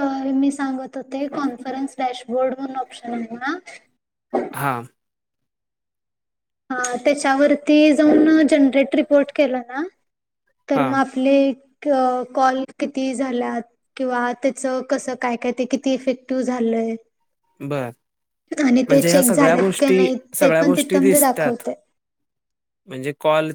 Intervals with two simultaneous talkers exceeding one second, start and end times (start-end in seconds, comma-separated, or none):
18.9-21.3